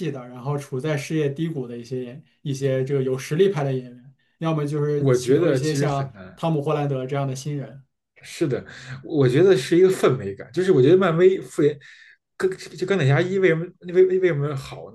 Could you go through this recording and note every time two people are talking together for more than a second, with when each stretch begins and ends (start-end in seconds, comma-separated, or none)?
4.9-6.4